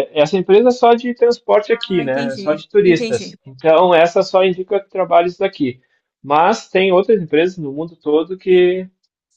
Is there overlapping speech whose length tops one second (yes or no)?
yes